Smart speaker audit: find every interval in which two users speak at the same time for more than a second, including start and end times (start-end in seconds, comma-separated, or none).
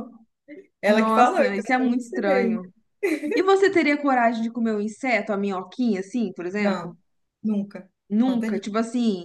0.8-2.6